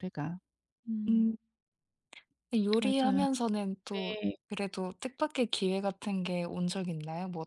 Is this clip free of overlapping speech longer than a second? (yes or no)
yes